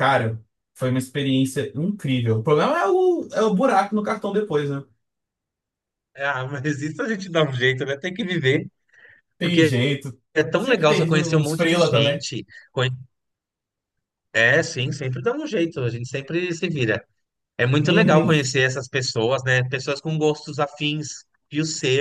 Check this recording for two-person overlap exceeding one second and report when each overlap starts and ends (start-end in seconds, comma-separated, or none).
10.6-12.2